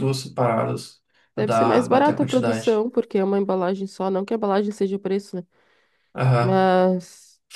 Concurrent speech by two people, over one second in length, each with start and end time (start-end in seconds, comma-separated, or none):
1.4-2.9